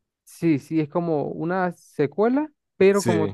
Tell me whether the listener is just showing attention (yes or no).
yes